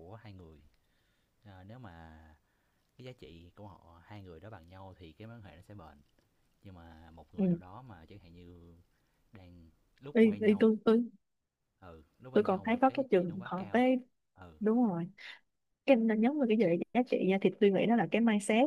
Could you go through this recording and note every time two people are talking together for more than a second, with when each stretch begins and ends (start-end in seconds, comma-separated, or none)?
12.3-13.8